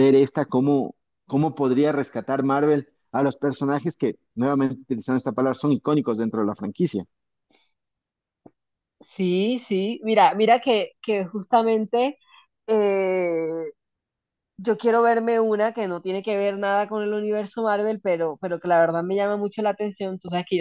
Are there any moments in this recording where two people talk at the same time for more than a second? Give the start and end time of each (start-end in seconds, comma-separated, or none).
none